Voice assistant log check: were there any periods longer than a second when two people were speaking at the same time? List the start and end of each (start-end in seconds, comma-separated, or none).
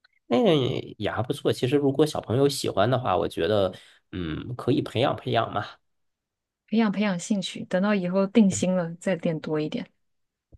none